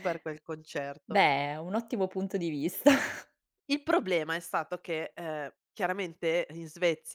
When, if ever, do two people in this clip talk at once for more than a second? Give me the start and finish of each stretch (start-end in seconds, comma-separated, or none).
none